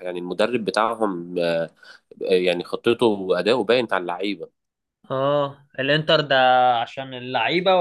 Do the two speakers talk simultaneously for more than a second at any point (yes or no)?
no